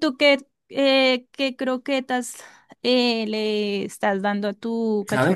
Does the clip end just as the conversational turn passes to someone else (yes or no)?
yes